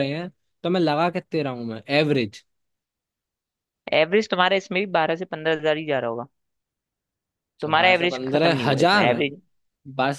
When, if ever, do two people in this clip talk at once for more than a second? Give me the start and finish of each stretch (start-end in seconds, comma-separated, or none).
7.6-9.1